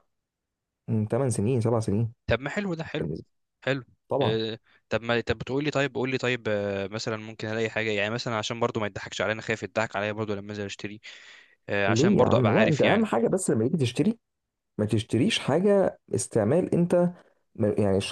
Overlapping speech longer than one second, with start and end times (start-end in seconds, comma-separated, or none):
11.9-13.1